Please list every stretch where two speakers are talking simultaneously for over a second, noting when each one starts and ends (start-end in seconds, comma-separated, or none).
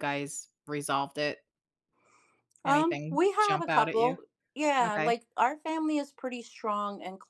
2.6-4.2